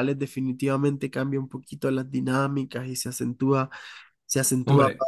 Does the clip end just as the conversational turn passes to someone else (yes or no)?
no